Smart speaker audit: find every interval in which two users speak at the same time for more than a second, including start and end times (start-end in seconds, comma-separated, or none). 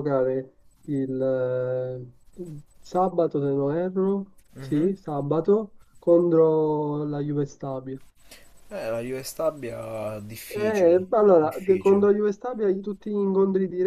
10.5-12.0